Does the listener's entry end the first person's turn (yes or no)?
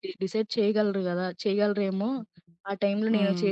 yes